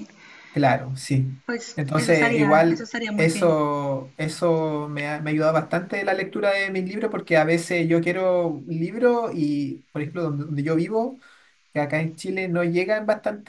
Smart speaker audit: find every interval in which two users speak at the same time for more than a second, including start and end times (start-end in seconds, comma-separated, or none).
1.8-3.5